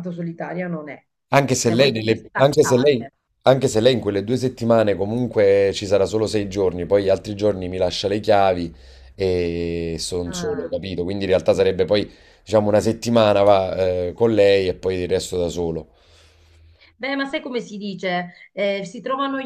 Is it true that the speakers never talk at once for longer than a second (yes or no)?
no